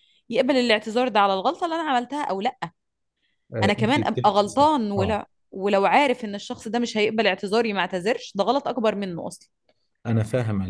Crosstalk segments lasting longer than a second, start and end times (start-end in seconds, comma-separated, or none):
3.6-5.2